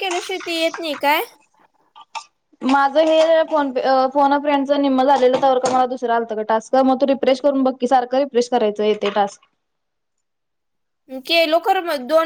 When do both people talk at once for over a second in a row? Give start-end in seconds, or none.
none